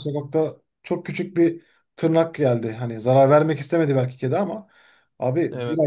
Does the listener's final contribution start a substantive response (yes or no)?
no